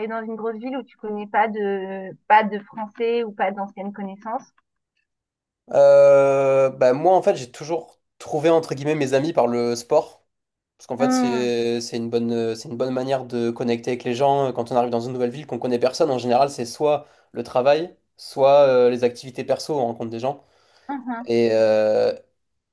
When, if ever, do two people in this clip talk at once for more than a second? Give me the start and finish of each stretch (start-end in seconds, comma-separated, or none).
none